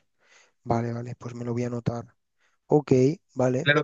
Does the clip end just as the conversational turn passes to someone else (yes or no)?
yes